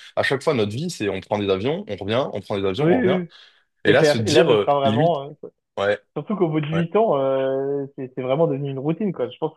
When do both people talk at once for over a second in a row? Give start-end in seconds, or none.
3.9-5.2